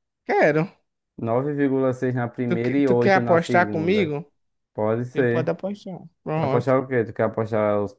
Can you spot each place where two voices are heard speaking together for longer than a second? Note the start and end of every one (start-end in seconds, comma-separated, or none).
2.5-4.2